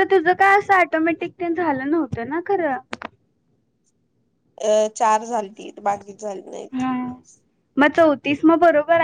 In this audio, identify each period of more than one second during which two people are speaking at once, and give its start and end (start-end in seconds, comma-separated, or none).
none